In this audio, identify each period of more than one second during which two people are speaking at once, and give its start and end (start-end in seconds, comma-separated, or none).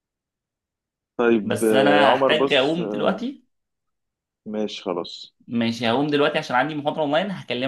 1.4-3.2